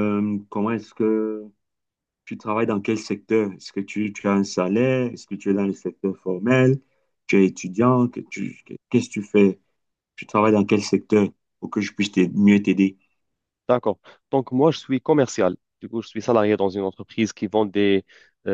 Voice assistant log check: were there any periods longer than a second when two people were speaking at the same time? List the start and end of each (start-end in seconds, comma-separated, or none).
none